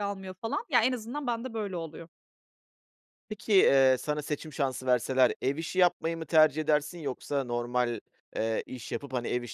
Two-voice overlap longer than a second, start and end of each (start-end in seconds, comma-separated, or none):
none